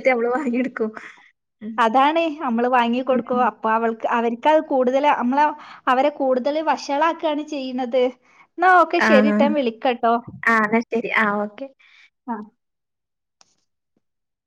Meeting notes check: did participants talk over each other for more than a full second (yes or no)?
no